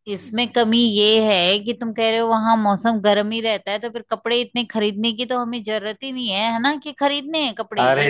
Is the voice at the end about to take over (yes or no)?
yes